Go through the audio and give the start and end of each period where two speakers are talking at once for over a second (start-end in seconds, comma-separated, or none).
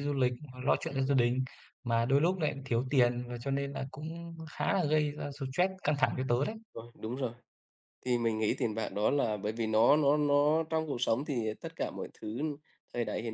none